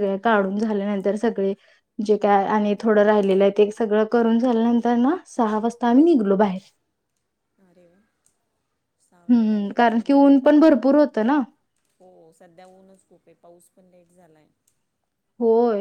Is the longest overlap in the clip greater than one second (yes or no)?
yes